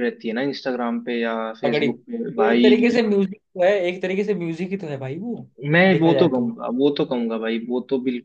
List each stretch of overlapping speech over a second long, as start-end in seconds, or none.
1.6-3.0